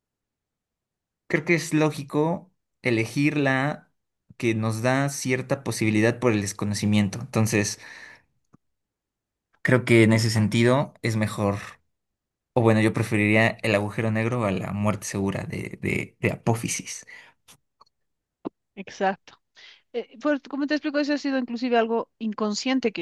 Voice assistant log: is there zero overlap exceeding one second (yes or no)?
yes